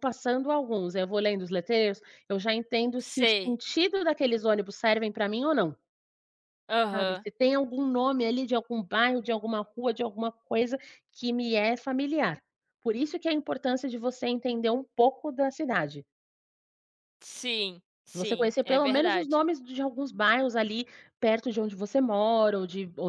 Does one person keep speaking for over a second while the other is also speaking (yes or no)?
yes